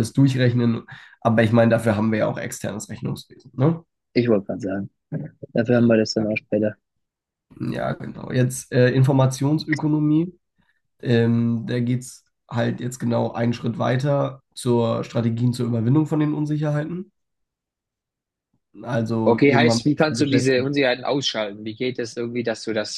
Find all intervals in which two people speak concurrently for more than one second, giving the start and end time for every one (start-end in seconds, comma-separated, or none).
19.2-20.8